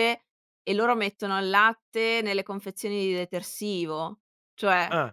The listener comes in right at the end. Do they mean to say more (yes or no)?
no